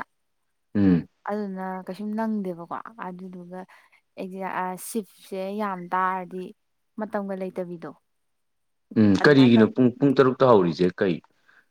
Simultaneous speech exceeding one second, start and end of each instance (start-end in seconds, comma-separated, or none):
none